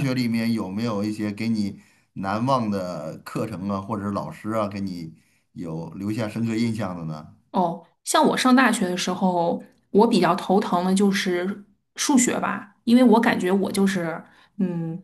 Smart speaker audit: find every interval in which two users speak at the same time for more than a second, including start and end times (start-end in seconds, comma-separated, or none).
none